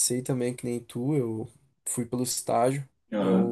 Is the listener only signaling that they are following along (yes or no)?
yes